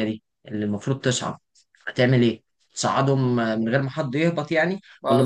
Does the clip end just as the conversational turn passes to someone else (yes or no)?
no